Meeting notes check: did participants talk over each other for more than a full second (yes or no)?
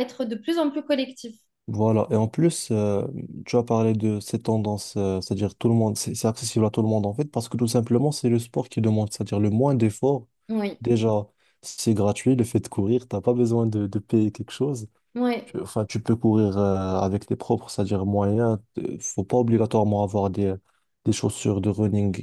no